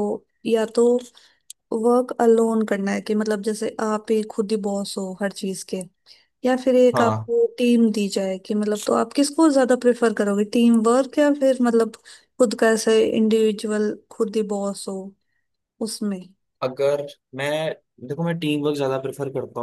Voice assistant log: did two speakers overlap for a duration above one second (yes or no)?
no